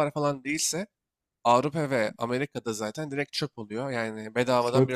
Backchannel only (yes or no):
no